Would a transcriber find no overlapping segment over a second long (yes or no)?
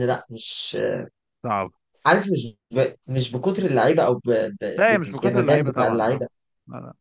no